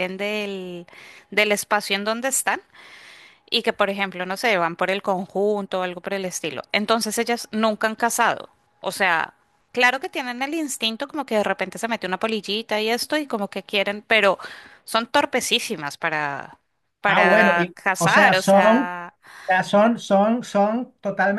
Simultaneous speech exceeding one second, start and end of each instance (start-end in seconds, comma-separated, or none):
17.1-18.9